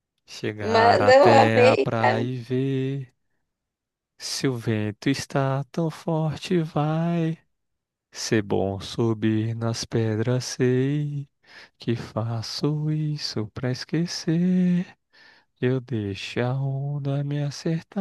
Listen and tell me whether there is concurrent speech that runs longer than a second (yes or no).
yes